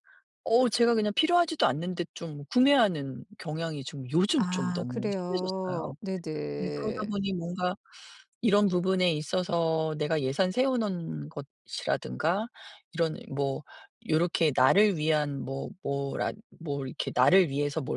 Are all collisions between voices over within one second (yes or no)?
no